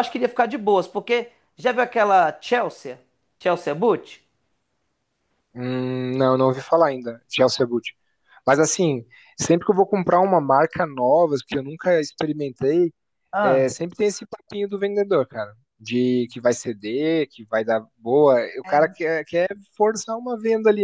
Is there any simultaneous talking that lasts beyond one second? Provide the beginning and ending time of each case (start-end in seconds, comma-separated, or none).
none